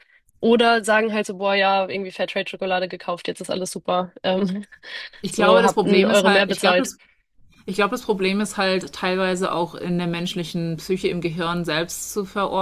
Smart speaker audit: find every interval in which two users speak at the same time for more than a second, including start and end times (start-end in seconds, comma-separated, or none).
5.3-6.9